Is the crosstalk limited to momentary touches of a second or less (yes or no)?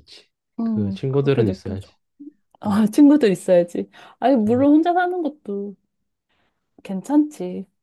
no